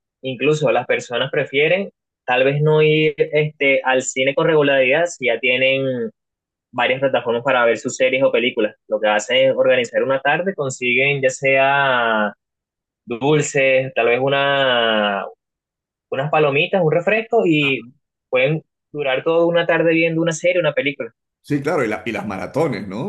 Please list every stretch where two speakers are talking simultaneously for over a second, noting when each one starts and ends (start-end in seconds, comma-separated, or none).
none